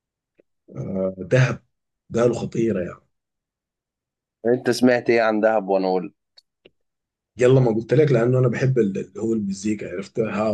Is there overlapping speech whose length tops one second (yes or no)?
no